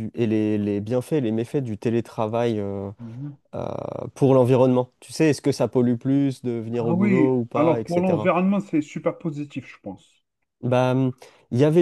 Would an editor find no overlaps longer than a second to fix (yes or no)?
no